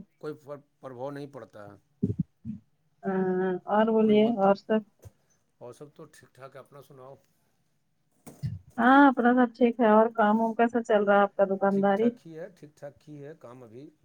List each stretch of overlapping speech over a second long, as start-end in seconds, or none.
none